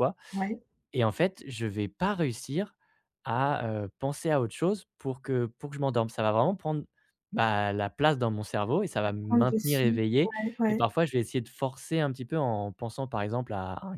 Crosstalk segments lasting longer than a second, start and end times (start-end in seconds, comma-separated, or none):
9.2-10.9